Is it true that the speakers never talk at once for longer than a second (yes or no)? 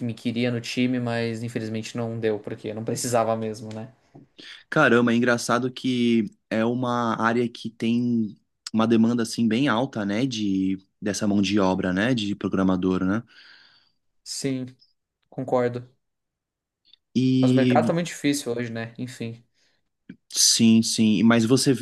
yes